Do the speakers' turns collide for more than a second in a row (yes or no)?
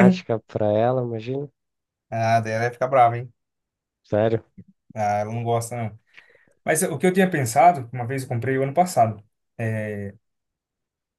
no